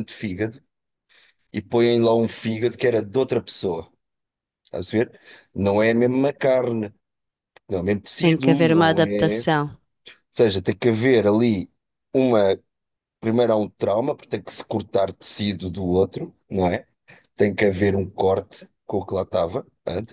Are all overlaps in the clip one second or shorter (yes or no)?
no